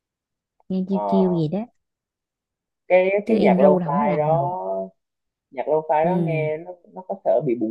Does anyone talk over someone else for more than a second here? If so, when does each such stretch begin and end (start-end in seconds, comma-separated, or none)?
3.2-4.5